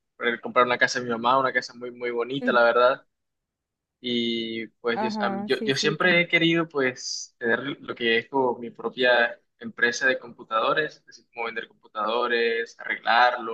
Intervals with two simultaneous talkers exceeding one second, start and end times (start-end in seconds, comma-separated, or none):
4.9-6.3